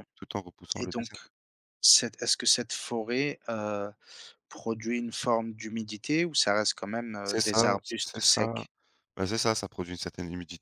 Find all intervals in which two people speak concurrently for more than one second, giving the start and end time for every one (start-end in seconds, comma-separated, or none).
7.2-8.7